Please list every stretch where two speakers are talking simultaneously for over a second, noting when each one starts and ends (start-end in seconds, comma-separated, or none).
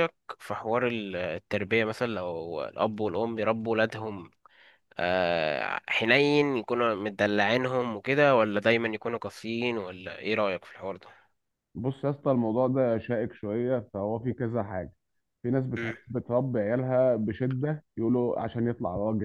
none